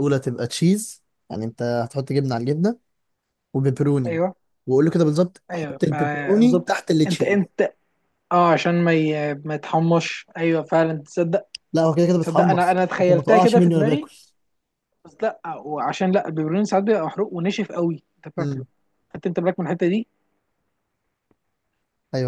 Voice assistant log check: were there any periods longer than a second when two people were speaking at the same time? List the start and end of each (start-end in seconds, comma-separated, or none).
5.5-7.4, 12.2-14.1